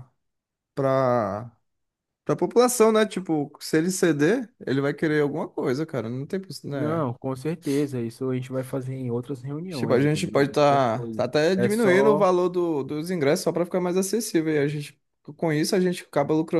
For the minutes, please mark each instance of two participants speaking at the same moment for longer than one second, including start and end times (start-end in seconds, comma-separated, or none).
9.7-12.3